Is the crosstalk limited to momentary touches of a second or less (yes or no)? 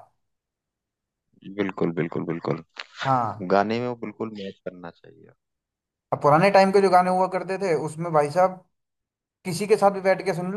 yes